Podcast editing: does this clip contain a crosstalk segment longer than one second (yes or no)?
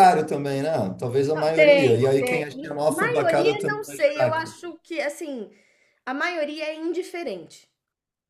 yes